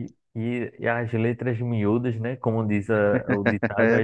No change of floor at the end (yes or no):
yes